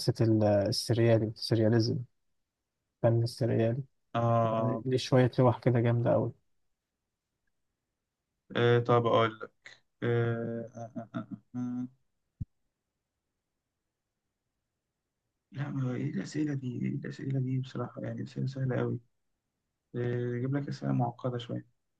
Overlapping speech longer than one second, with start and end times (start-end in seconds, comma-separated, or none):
none